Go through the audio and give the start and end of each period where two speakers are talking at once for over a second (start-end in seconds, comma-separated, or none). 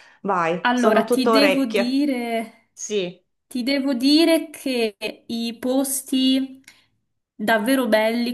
0.6-2.0